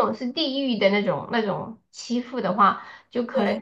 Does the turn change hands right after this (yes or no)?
no